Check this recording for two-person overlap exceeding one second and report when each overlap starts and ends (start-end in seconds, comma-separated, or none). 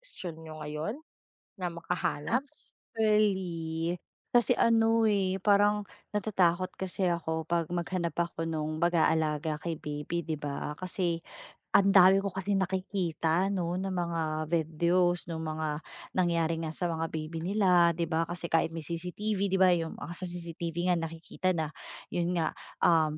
none